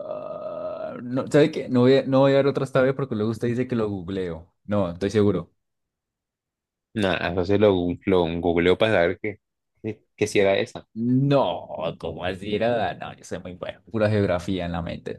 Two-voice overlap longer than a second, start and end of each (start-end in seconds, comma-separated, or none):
none